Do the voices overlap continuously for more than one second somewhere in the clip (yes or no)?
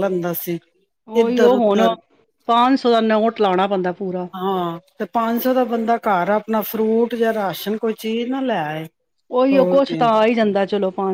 no